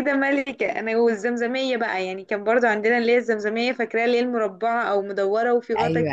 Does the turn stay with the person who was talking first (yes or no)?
no